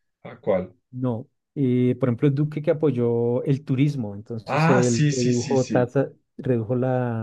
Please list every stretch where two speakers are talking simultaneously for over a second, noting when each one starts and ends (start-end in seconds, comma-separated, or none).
4.5-5.9